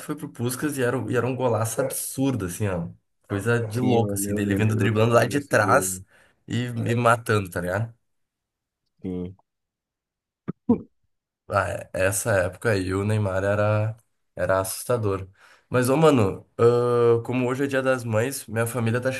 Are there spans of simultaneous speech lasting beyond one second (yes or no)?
yes